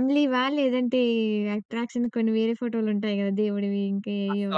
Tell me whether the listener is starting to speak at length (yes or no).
yes